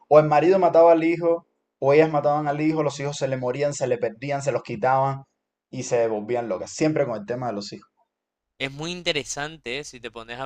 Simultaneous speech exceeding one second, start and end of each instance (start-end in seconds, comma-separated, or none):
none